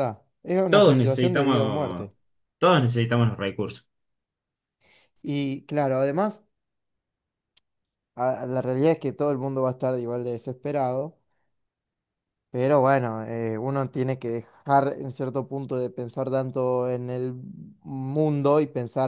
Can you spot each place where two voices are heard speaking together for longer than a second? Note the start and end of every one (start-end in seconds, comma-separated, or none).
0.7-2.1